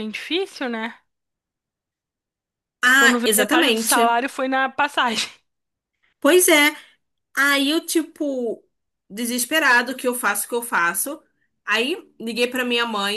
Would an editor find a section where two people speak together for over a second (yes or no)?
yes